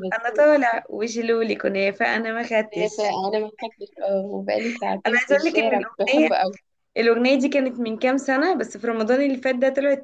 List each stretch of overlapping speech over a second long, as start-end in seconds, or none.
5.0-6.3